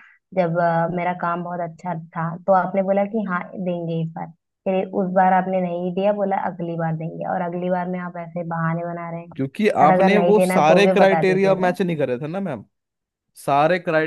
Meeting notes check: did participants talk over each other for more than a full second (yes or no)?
yes